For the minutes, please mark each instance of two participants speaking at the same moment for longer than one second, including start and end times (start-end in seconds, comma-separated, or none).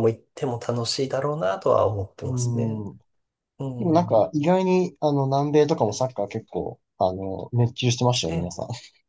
none